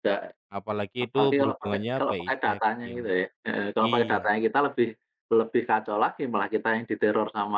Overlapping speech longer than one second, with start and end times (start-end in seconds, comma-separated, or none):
1.0-3.1